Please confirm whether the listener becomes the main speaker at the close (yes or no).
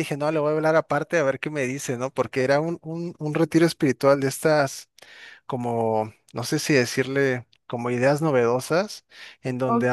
yes